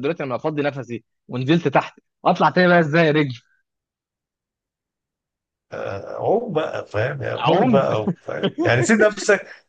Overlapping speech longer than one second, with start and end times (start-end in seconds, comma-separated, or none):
none